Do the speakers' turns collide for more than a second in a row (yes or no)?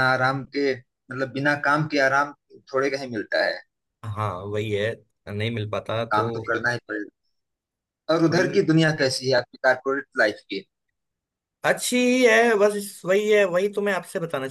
no